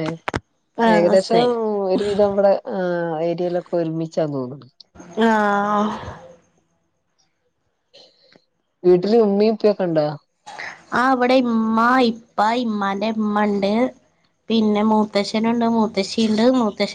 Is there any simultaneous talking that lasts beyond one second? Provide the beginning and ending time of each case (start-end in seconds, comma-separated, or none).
none